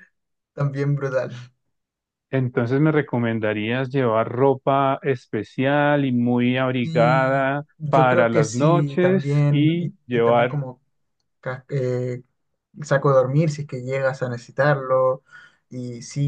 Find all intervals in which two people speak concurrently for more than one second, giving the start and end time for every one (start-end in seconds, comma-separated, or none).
6.8-10.6